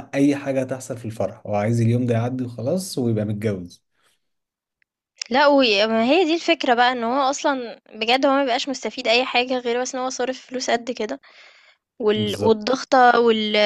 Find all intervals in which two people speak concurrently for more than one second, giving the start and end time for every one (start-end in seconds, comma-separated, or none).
none